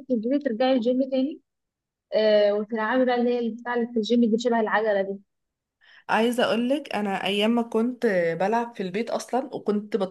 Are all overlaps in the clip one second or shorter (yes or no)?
yes